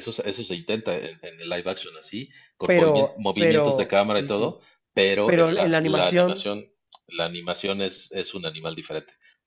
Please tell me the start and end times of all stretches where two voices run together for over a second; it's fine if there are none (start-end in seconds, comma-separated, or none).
2.6-4.6, 5.2-6.5